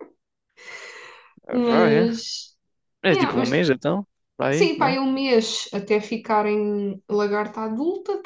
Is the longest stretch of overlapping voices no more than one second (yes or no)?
yes